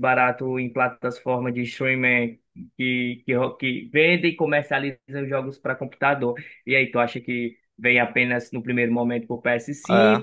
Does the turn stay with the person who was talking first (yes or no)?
yes